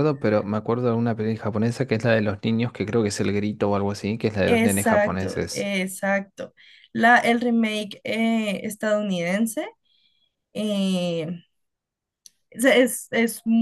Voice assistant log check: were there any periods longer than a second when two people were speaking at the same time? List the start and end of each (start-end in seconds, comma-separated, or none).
4.4-5.7